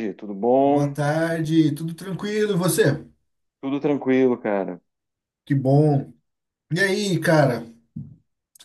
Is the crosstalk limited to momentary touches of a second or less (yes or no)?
yes